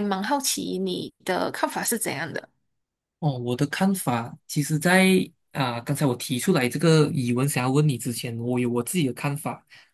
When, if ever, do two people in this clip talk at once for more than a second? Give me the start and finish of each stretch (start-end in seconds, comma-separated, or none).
none